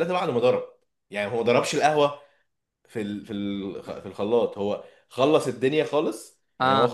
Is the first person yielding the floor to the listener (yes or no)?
no